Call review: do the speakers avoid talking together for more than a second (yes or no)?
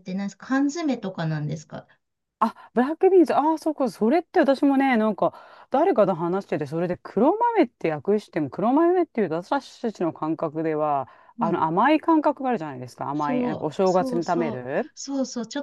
no